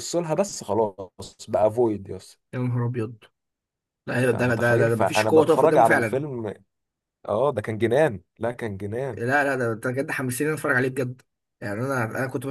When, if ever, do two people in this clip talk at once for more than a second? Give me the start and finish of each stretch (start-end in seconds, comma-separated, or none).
4.3-6.2